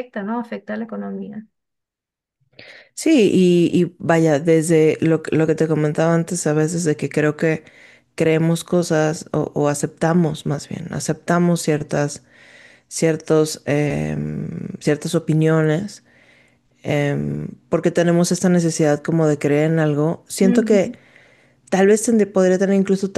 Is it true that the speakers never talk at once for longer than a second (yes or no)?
yes